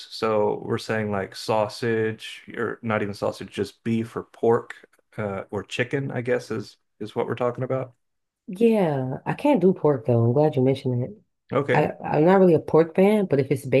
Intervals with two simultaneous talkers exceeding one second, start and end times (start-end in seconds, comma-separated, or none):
none